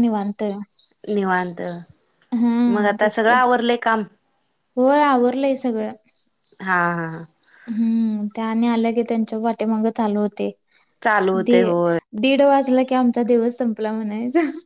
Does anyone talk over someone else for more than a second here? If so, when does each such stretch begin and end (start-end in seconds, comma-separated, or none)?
none